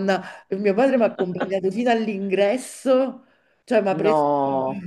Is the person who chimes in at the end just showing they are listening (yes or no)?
yes